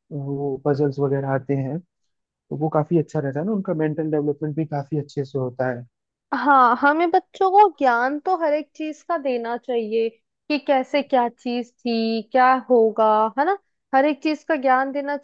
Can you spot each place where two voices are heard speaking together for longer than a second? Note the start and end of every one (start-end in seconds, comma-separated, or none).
none